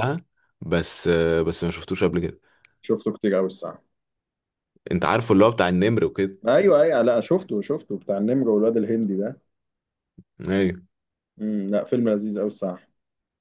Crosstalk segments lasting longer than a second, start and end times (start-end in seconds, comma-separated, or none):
none